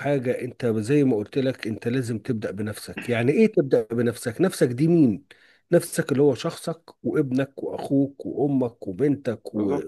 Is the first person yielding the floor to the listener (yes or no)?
yes